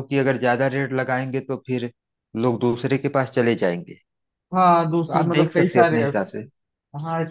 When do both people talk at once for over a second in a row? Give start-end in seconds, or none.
5.1-6.4